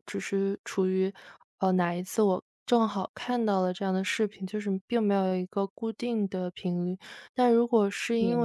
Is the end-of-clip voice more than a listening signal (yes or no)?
no